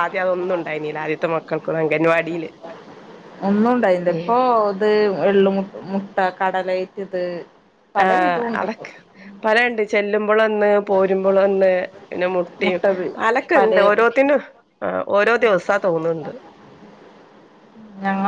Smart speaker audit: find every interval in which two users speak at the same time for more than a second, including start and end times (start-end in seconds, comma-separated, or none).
none